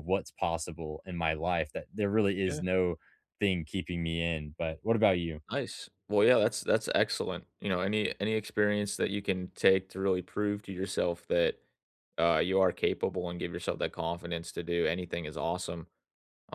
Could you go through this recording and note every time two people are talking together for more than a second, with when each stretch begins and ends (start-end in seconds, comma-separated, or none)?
none